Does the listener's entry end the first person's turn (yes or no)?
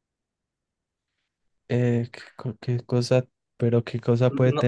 yes